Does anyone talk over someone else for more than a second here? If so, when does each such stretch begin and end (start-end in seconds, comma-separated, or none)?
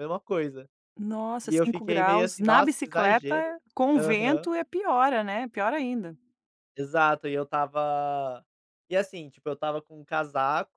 1.4-3.3